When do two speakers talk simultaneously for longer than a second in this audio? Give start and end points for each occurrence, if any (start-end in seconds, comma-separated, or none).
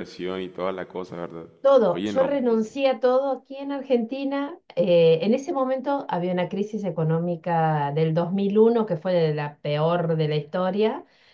none